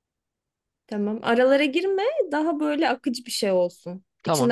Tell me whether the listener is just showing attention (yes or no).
no